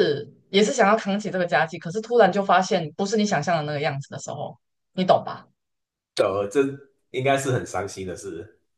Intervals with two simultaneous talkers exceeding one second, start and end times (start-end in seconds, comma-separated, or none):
none